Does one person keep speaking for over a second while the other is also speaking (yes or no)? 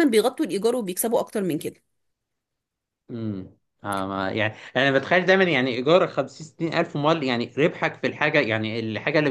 no